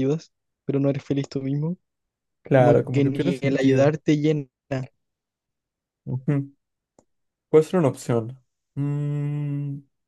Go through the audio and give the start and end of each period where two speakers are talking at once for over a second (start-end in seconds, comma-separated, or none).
2.5-3.9